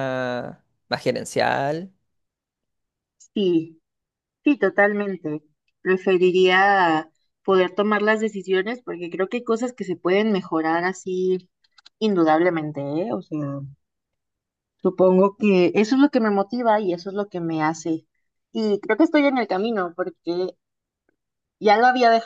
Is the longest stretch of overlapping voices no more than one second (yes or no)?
yes